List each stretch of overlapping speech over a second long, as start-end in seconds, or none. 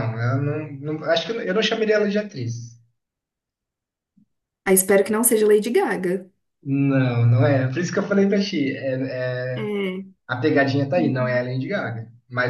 none